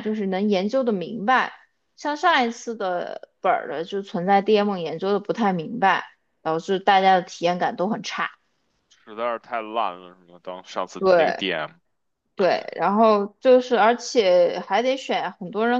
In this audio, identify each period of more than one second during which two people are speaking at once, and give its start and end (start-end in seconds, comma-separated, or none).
none